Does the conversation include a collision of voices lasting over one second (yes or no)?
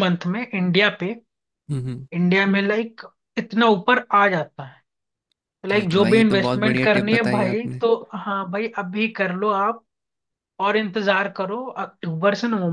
yes